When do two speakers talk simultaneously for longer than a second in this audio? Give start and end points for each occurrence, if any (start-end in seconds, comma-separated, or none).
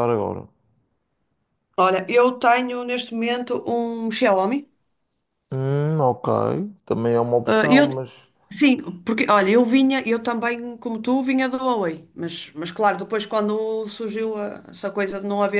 none